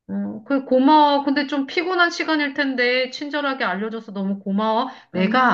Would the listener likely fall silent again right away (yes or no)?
yes